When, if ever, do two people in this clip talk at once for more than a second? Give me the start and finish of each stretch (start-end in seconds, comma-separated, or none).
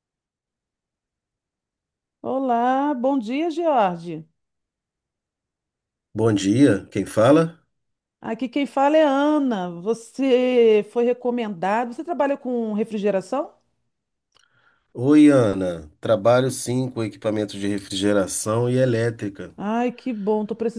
none